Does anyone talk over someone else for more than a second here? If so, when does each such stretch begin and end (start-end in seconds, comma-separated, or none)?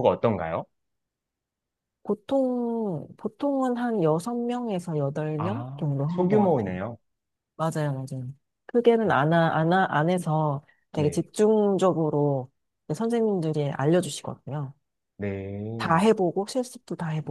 5.4-6.8